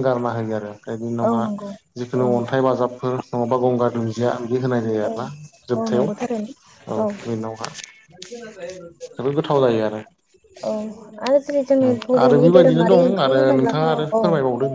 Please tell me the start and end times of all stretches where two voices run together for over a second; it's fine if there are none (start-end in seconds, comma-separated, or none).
11.9-14.2